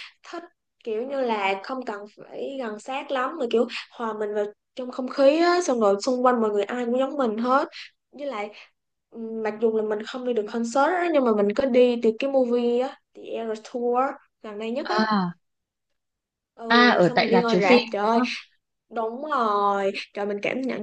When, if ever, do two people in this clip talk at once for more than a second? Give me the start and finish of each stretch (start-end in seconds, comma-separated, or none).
16.7-18.2